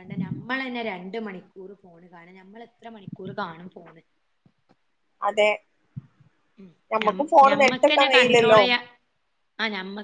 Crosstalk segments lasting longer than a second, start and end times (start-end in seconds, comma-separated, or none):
7.0-8.6